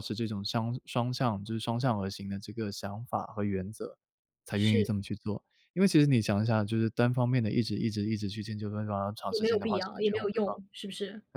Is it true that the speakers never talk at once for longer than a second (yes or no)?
no